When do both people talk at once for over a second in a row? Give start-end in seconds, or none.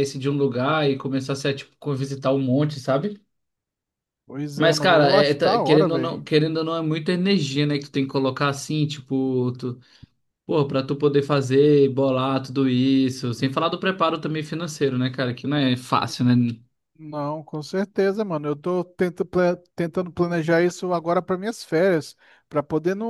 4.5-6.1